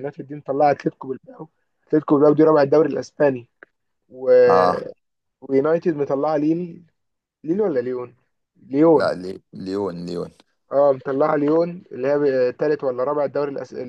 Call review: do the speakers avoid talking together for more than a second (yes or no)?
yes